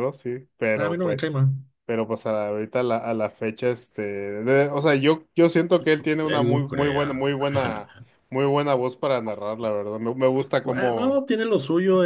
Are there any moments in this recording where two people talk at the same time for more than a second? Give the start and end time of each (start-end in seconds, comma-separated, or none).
6.0-7.3